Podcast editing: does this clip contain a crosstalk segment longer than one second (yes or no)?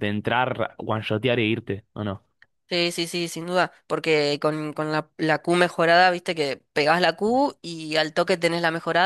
no